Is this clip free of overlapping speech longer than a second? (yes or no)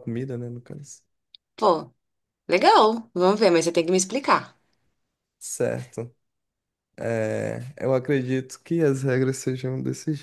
yes